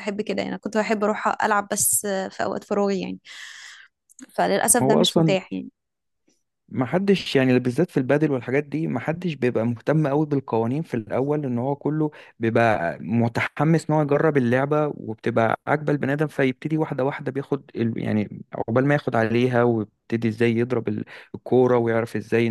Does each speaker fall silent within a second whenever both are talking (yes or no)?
yes